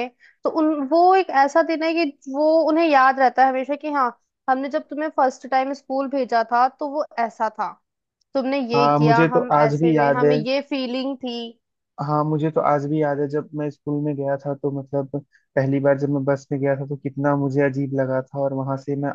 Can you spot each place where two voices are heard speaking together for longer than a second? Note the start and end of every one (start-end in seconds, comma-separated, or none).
8.7-10.4